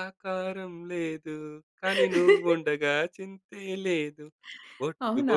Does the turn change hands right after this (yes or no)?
no